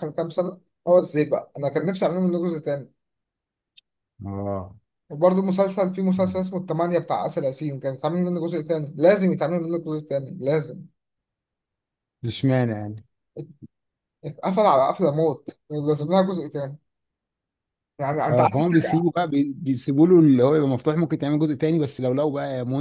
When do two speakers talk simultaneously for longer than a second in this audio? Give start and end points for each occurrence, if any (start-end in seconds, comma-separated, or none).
none